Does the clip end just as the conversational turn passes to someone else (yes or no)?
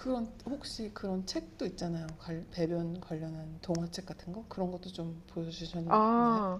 yes